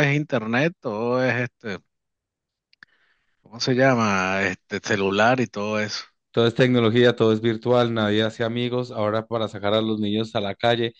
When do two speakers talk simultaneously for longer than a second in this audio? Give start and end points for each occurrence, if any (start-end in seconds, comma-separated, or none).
none